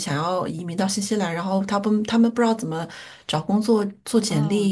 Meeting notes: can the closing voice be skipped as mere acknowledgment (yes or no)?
yes